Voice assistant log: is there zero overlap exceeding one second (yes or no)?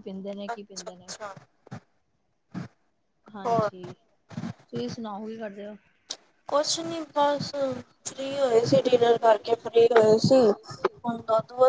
yes